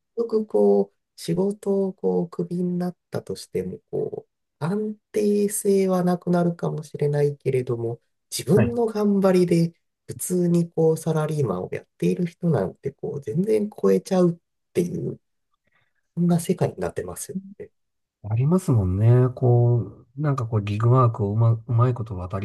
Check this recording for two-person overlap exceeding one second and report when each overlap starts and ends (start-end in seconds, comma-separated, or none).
none